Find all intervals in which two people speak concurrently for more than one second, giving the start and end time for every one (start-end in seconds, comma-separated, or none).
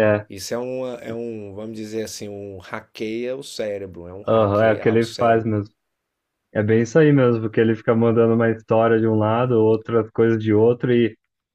4.3-5.5